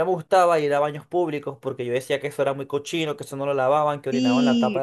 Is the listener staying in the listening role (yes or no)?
no